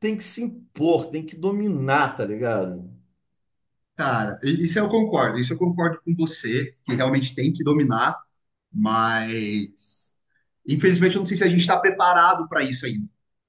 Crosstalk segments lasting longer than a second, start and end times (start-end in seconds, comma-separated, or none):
none